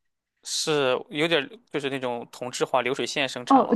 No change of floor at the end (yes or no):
no